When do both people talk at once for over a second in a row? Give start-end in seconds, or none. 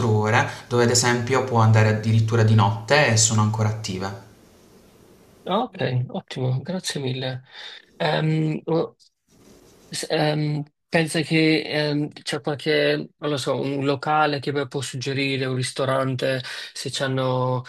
none